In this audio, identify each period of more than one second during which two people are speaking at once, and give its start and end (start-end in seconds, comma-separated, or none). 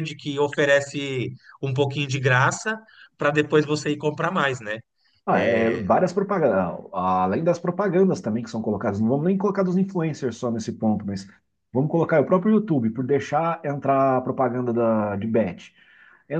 none